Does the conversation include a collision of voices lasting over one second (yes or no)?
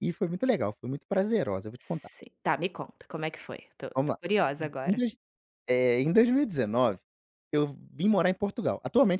no